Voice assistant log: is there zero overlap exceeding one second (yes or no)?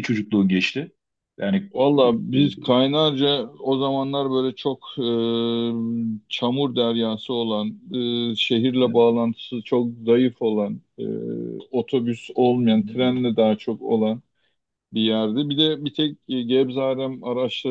yes